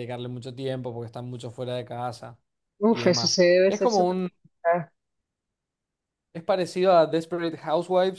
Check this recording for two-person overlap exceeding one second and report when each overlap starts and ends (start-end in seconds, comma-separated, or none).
2.9-4.3